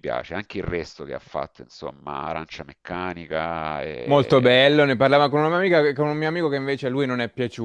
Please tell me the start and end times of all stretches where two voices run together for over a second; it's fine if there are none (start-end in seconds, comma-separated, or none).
none